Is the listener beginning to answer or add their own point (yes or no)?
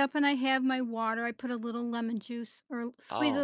no